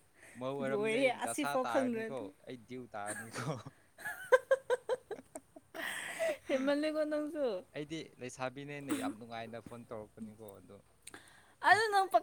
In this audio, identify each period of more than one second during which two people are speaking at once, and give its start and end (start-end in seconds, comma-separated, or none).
0.7-2.2